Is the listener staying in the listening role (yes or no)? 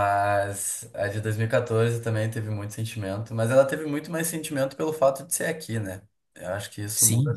no